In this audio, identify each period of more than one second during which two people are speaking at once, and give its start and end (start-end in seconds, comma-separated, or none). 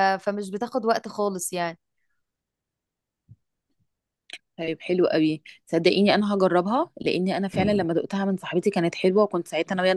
none